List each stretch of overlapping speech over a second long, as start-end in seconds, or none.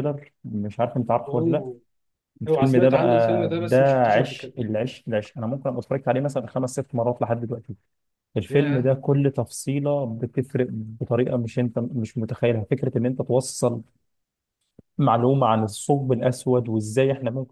2.5-4.5